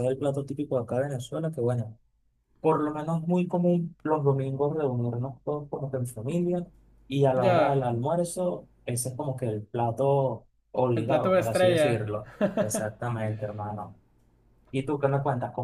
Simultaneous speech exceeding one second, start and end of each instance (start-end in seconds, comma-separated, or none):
10.9-12.2